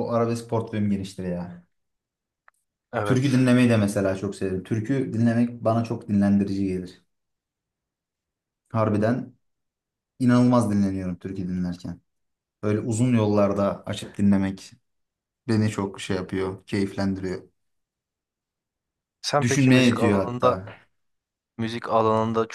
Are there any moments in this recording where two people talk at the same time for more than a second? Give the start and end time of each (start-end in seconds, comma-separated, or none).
19.4-20.6